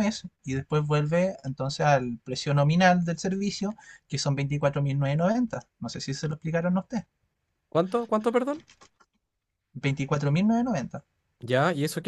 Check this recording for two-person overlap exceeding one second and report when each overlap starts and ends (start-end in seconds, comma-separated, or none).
none